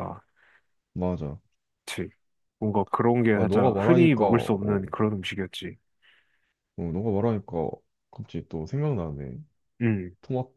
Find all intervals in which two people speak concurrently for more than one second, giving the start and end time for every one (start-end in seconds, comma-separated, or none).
3.3-4.5